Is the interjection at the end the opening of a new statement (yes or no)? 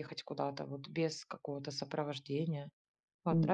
yes